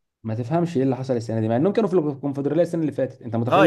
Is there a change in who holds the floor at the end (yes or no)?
yes